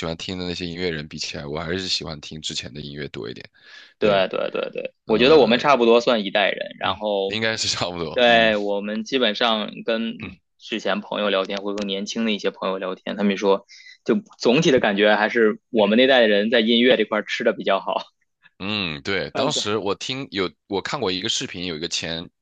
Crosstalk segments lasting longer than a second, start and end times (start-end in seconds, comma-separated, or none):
none